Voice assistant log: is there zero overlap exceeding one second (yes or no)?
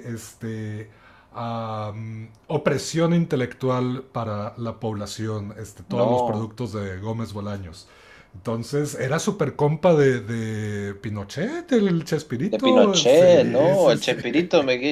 no